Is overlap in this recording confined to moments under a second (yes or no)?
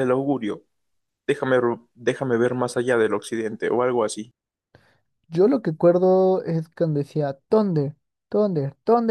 yes